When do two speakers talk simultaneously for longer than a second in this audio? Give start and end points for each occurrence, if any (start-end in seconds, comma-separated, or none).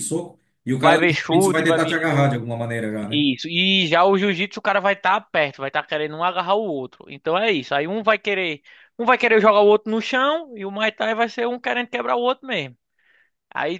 0.7-2.4